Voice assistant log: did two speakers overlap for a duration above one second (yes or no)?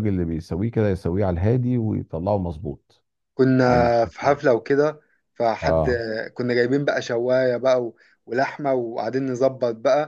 no